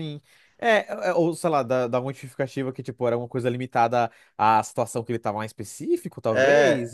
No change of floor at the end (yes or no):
no